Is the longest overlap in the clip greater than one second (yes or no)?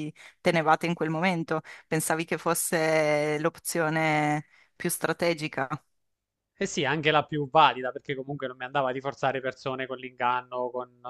no